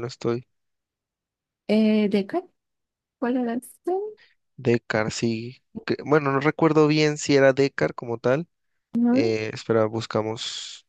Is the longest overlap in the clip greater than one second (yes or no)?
no